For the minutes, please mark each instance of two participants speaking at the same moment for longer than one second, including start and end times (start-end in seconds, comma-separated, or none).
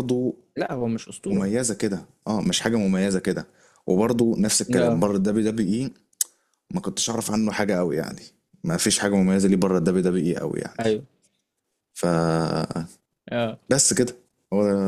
none